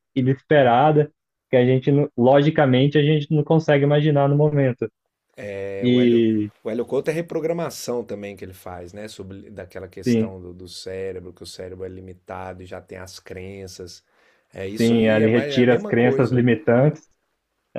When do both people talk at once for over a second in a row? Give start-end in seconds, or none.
14.8-16.4